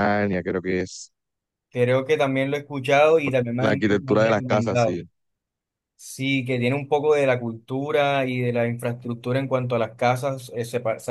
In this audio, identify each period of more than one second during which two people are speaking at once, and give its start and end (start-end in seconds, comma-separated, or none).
3.5-5.0